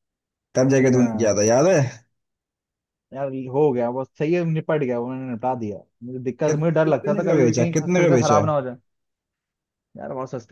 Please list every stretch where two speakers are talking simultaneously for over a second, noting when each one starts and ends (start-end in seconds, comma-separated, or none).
6.5-8.5